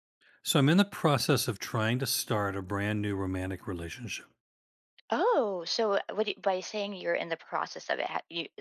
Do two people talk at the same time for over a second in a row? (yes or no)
no